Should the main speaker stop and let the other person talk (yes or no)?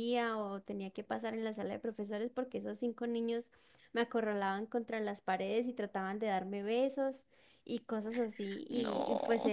no